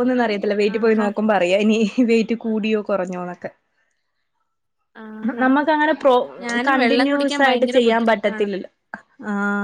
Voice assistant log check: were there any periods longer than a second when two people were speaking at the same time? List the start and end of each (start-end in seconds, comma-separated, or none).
6.7-8.5